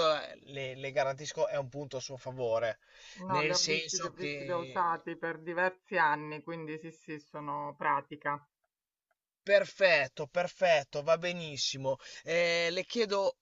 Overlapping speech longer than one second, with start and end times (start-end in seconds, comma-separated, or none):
3.3-5.0